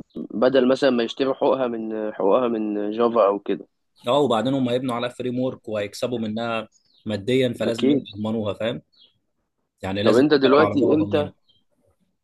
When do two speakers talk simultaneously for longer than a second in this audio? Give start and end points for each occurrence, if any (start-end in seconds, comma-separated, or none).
10.0-11.3